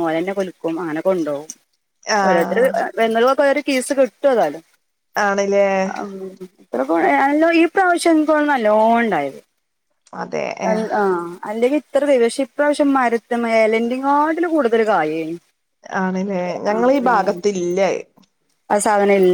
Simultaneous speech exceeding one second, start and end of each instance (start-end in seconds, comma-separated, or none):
none